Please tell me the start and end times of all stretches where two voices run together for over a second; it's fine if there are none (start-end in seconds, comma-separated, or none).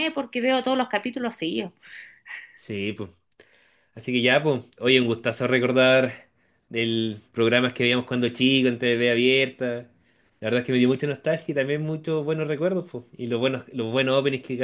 none